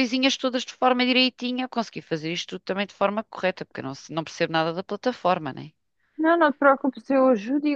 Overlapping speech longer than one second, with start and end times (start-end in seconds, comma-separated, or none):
none